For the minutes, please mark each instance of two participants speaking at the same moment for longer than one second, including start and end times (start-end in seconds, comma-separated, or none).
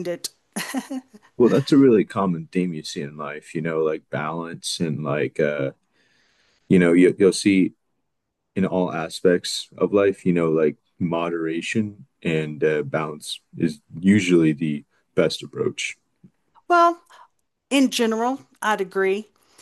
none